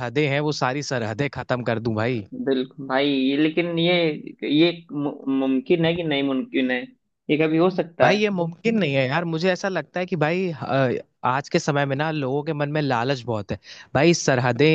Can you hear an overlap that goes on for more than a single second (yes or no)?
no